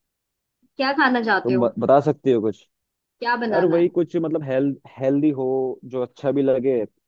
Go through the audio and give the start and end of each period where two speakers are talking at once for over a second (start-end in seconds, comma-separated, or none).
none